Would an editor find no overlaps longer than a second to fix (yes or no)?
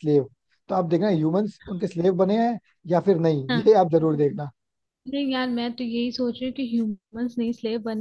yes